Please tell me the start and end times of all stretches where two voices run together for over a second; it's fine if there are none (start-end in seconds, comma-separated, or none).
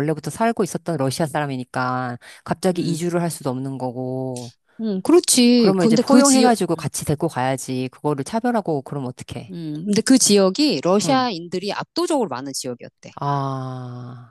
5.6-6.9